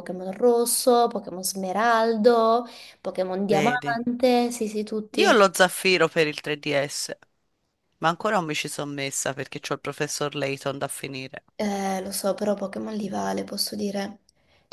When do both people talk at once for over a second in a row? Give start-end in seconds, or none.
none